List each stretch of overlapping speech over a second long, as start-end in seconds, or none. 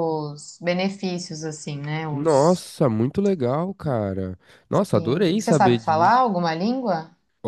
4.9-6.2